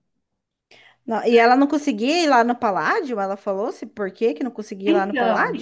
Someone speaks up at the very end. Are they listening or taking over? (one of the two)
taking over